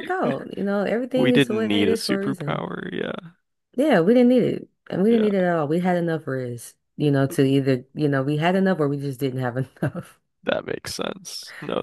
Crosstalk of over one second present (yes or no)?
yes